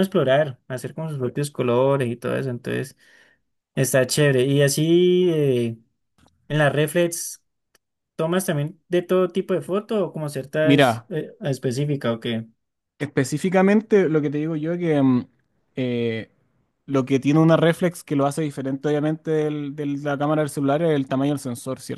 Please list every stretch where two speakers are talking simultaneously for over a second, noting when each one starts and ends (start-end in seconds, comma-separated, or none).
none